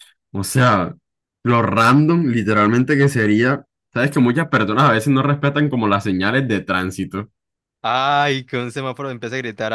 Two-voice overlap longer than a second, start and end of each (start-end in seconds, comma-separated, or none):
none